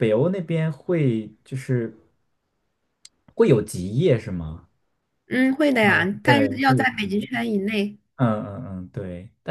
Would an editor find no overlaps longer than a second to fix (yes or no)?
no